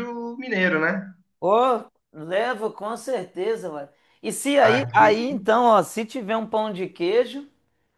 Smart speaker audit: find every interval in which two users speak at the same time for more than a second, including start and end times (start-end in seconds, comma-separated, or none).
none